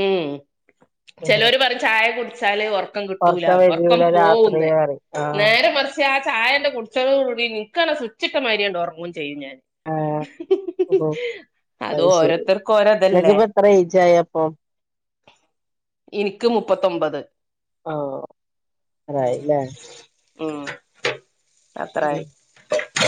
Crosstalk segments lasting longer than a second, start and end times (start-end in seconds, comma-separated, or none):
12.0-13.4